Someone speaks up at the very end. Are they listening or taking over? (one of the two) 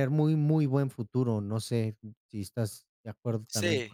taking over